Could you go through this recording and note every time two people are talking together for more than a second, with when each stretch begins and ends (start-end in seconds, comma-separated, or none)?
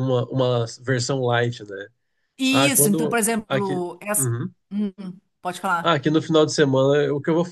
2.5-4.3